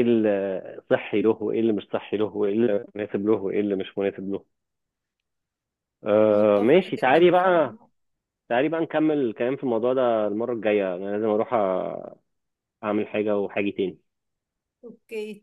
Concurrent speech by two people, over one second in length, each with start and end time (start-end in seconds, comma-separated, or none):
6.3-7.6